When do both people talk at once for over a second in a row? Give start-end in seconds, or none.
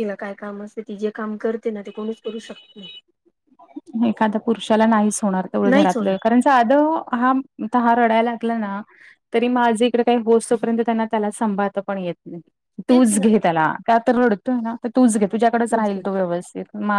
none